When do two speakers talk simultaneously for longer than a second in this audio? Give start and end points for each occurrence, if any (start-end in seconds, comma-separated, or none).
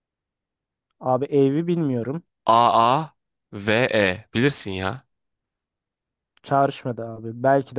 none